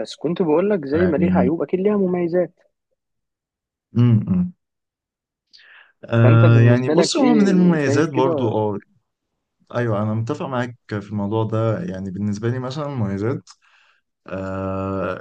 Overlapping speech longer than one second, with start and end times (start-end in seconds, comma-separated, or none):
6.2-8.5